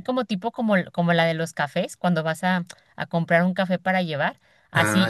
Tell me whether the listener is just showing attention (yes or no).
yes